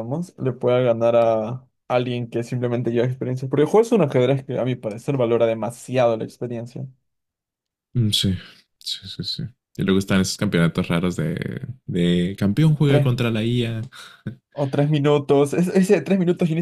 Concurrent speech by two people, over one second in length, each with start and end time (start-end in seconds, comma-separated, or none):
none